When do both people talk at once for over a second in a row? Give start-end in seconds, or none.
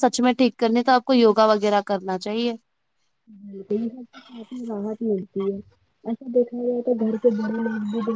none